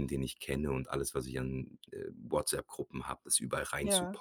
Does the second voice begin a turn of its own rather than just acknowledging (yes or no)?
no